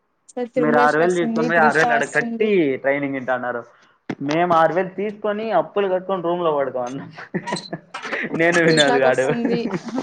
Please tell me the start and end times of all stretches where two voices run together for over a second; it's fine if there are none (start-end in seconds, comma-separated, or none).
0.6-2.5